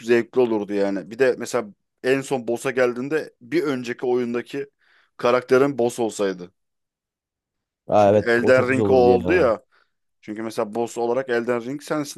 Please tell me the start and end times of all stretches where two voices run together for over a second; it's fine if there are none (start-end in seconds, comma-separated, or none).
8.0-9.5